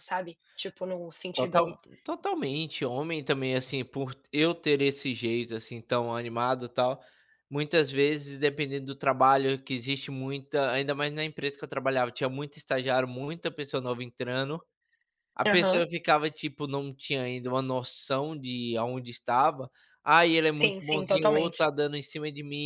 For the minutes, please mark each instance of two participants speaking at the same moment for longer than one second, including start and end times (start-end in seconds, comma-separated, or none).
20.5-21.7